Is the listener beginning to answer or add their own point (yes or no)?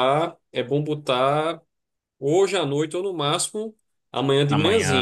no